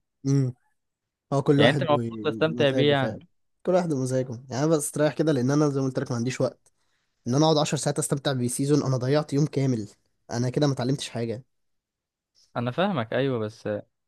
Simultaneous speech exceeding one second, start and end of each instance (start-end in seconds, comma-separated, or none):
1.6-3.2